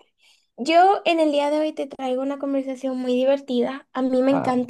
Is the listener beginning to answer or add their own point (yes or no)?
no